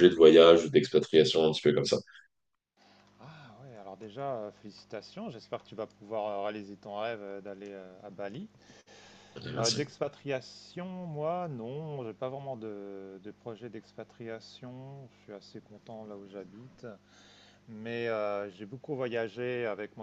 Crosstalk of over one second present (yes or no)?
no